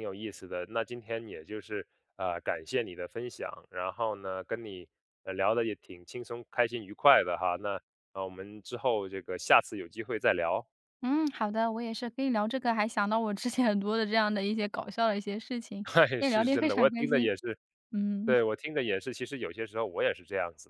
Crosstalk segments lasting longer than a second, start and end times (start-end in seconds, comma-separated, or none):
15.8-17.3